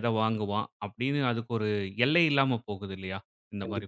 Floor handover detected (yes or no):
yes